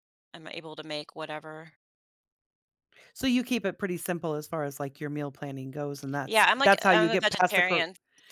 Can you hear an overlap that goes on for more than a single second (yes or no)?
yes